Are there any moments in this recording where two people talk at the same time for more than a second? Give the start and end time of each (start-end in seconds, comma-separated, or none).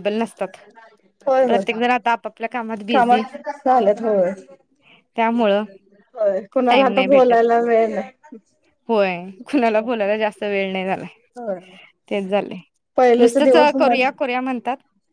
13.2-14.5